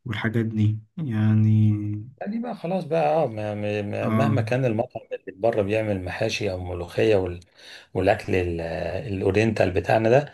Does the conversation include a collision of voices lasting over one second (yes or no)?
no